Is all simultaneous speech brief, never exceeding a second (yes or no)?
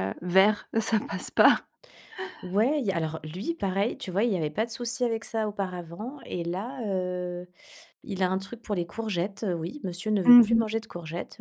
yes